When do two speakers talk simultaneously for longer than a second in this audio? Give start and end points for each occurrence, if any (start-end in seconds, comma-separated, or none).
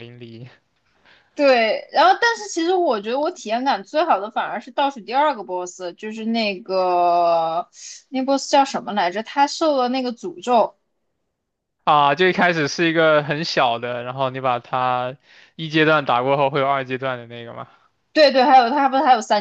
none